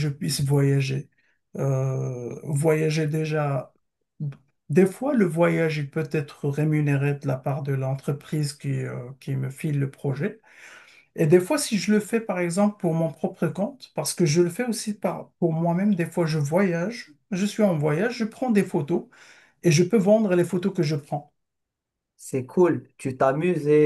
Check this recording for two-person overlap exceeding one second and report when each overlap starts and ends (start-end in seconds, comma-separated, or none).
none